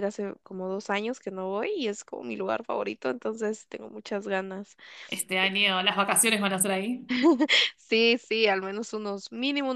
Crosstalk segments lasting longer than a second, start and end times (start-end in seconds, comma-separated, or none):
none